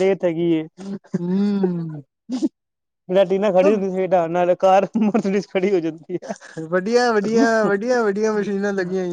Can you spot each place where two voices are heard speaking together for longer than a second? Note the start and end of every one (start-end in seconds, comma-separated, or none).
none